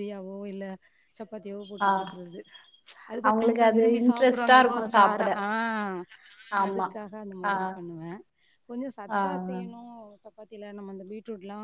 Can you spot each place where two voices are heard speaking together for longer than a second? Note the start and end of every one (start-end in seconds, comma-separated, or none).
3.3-5.3